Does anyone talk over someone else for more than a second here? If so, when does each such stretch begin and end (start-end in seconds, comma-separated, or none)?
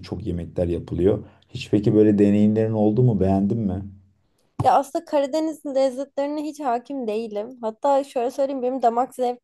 none